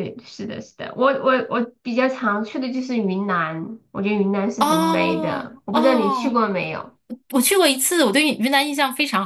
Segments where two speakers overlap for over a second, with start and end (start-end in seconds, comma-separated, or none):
4.6-6.4